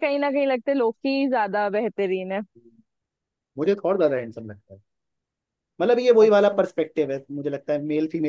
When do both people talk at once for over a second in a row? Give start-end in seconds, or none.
none